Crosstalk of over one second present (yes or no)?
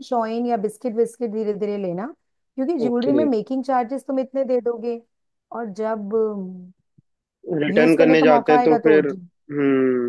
yes